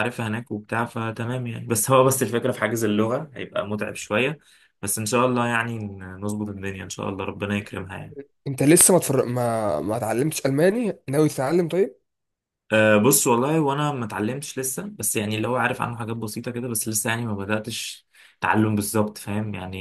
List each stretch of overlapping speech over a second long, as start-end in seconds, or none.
none